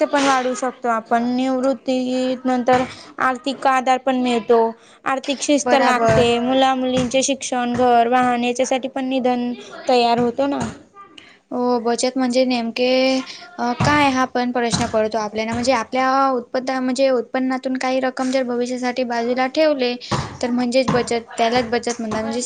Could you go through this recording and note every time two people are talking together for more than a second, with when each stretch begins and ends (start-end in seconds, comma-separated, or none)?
none